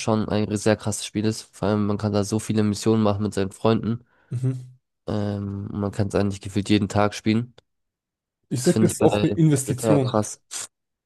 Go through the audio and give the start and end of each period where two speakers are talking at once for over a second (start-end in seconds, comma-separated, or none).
8.6-10.2